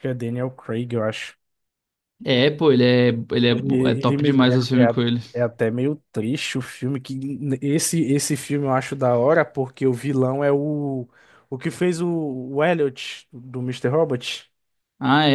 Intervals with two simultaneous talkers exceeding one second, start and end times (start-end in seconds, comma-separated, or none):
3.5-5.2